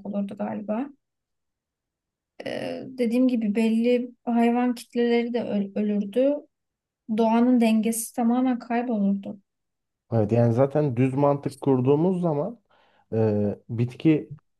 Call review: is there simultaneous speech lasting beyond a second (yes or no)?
no